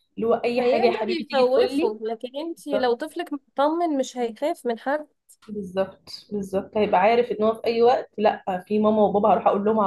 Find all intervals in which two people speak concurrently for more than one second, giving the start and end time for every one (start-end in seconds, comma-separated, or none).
0.6-2.0